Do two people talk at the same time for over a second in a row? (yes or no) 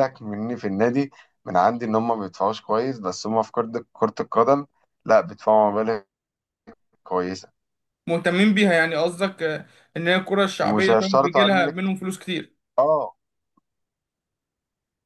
yes